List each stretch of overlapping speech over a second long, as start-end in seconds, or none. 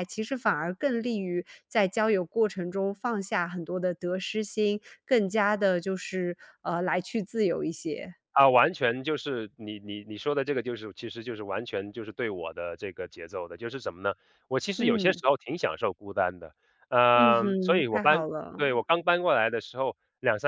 17.1-18.6